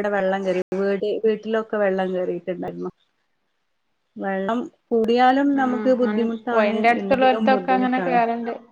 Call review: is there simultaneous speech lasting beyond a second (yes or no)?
yes